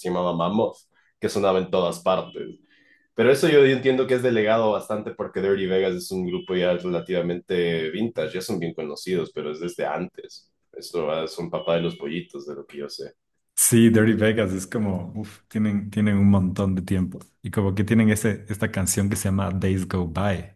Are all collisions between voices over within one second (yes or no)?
yes